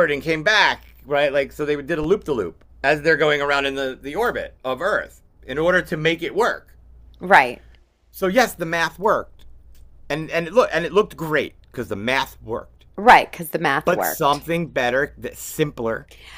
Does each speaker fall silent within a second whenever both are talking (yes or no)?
yes